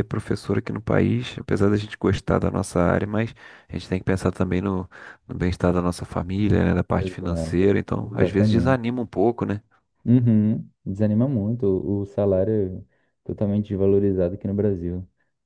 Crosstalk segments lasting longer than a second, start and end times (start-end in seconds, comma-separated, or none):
6.9-8.8